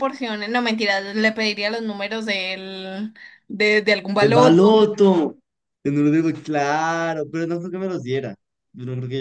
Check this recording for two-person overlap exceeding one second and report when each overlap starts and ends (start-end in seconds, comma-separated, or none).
none